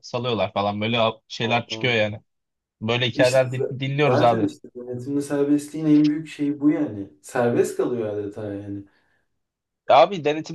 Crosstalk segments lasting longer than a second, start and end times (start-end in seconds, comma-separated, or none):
3.1-4.5